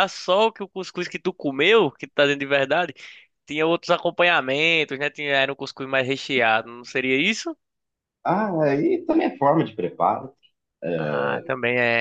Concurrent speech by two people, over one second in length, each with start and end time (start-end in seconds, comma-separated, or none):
none